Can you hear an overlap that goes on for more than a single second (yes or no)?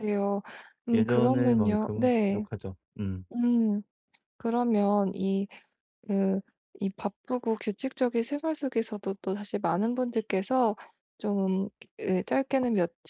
yes